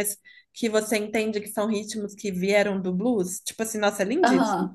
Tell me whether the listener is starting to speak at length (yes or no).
yes